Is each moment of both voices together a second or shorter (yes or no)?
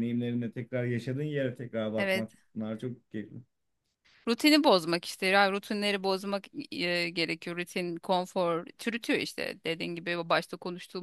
yes